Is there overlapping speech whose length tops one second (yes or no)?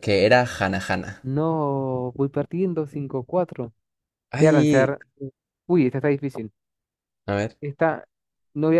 no